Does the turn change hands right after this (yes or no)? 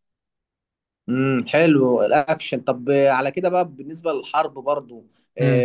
no